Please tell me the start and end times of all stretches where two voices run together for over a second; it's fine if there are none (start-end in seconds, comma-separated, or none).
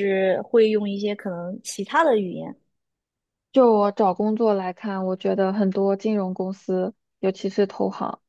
none